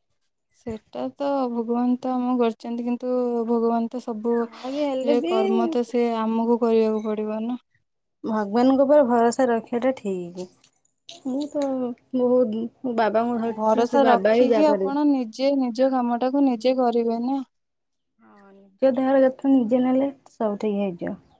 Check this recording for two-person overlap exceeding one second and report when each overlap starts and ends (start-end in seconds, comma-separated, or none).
13.6-15.0